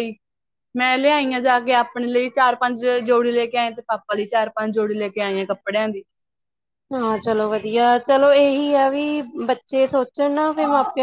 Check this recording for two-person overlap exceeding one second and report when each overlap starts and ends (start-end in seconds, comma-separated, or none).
none